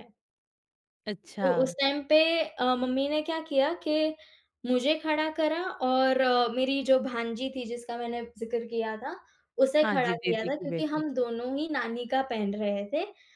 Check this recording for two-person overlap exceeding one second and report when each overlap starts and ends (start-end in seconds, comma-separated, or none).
9.8-11.0